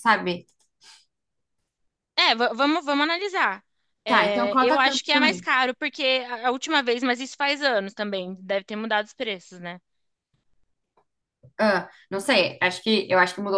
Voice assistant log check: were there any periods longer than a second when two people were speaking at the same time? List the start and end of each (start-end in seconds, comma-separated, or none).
4.1-5.5